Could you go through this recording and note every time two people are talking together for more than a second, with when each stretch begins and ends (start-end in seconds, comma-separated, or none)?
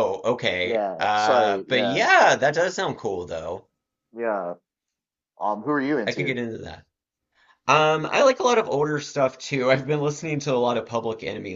0.6-2.1